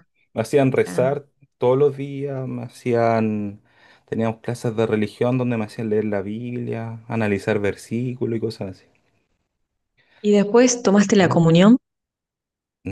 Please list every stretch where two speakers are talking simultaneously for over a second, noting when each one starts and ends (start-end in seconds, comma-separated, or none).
none